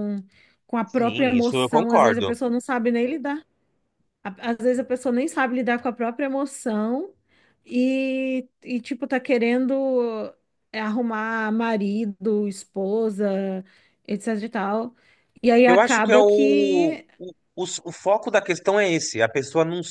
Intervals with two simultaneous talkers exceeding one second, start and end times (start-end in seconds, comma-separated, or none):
0.9-2.3, 15.7-17.1